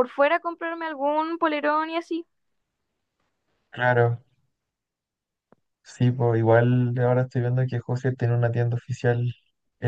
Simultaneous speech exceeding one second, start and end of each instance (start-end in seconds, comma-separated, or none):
none